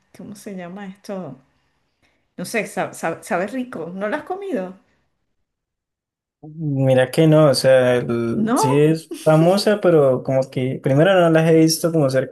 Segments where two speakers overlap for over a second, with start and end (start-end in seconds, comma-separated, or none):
none